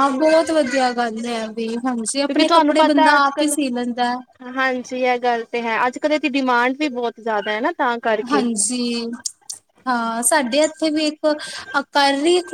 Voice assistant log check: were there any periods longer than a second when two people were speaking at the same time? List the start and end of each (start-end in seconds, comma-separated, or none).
2.1-3.5